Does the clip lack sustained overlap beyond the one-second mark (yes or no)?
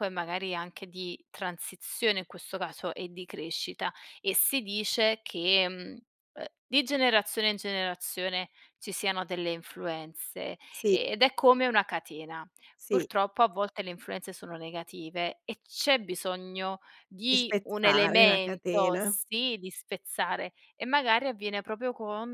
no